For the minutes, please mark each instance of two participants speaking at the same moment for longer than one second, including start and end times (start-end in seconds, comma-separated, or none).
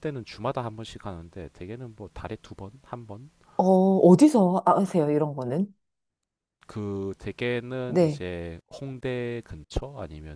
none